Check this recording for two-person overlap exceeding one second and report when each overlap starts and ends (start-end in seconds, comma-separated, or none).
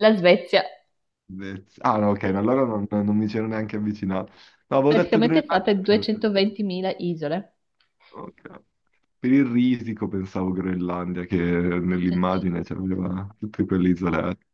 4.9-6.1